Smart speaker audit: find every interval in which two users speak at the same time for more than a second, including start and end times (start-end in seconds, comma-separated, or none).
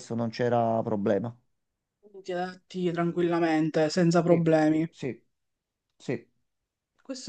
none